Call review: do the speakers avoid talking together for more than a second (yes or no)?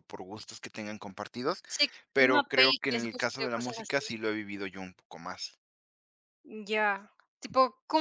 no